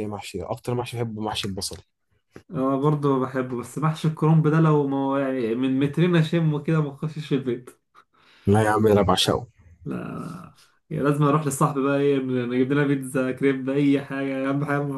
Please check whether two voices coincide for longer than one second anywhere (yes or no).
no